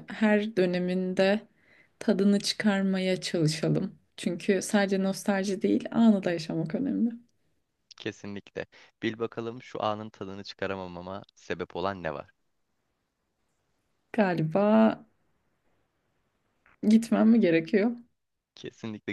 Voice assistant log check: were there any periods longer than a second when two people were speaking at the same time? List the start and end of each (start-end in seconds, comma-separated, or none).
none